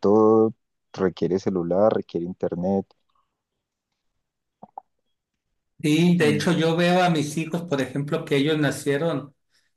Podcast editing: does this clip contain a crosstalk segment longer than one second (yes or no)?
no